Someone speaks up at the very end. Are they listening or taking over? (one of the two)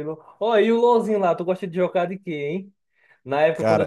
listening